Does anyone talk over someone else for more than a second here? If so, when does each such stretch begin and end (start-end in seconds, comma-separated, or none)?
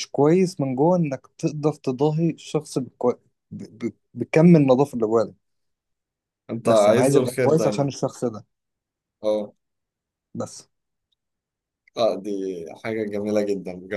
6.7-7.9